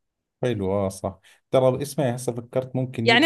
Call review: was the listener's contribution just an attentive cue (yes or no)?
no